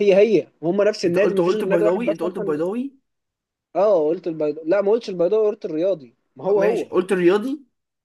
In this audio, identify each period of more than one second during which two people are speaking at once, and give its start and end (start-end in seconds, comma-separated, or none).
1.1-2.5